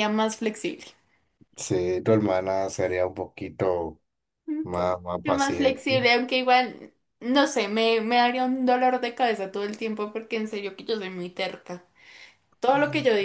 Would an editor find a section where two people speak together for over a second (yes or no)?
yes